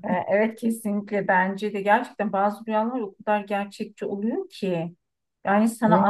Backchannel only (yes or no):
yes